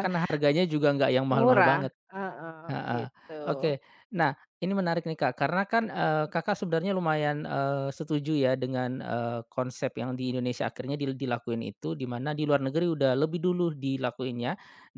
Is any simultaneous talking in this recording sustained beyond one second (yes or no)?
no